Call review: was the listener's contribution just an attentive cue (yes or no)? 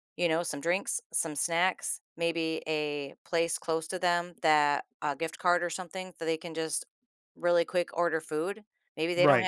yes